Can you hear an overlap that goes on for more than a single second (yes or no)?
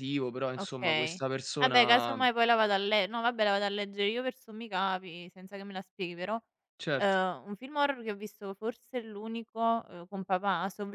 yes